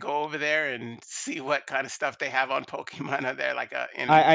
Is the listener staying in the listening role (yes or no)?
no